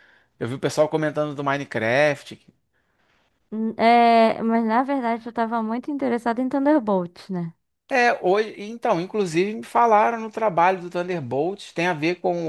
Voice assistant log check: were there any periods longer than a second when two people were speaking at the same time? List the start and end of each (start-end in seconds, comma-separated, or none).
none